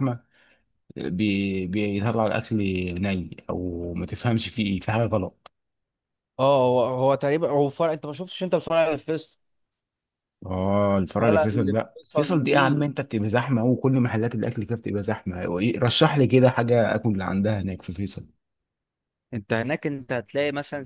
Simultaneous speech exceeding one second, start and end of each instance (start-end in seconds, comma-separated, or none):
11.2-12.8